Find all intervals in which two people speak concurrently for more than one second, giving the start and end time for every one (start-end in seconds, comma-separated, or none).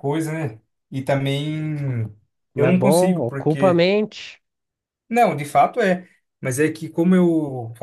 2.5-3.9